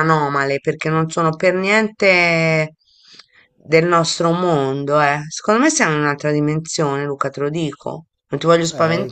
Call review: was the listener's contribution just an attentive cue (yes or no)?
no